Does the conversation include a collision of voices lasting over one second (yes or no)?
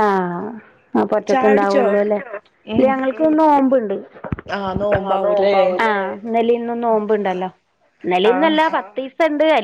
no